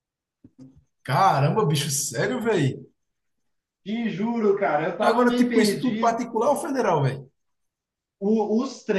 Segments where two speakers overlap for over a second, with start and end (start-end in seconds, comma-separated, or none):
5.0-6.2